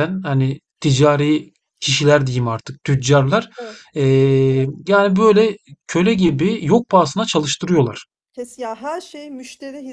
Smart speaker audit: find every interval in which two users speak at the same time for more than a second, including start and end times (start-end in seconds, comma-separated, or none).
none